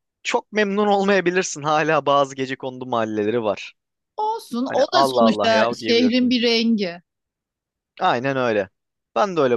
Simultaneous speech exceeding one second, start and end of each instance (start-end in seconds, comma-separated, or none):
4.7-6.4